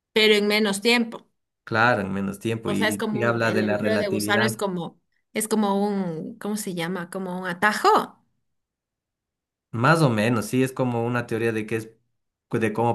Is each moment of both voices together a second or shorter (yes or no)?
no